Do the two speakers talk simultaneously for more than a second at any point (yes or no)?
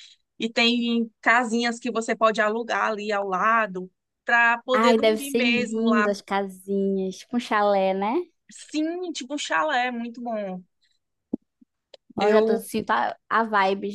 yes